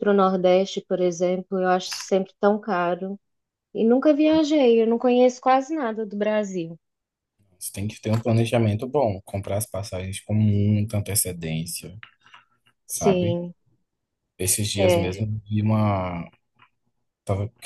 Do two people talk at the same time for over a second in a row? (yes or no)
no